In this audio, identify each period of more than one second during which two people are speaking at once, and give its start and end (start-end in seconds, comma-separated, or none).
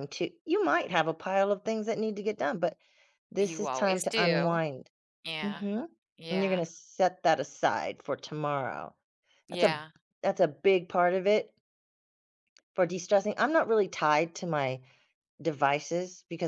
3.4-4.6